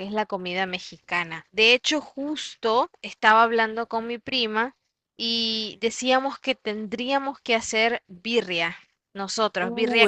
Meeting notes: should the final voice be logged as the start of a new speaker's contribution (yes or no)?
yes